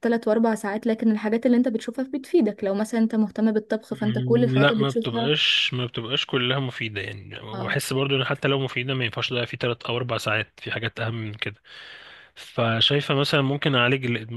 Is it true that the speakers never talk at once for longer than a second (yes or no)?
no